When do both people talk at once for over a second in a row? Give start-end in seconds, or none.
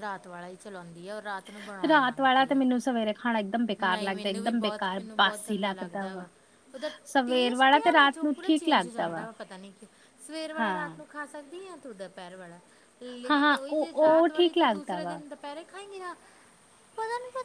7.2-9.3, 13.3-15.2